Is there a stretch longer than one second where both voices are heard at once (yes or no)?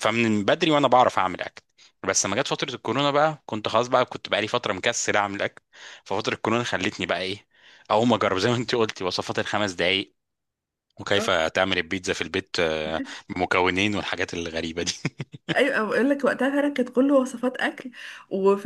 no